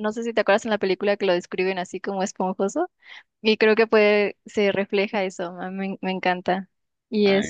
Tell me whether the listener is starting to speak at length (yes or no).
no